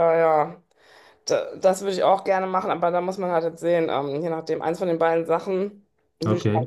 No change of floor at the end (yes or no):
no